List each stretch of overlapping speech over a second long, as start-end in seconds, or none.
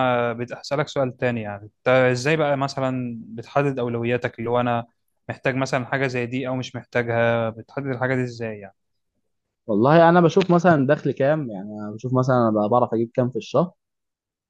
none